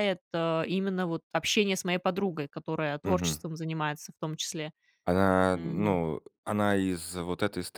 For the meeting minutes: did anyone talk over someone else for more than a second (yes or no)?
no